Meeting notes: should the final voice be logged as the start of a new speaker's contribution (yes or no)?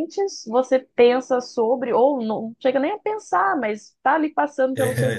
no